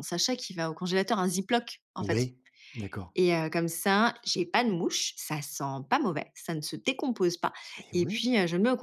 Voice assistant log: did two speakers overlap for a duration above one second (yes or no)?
no